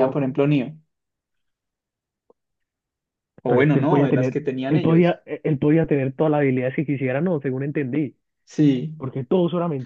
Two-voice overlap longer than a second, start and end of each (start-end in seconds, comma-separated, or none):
3.5-5.1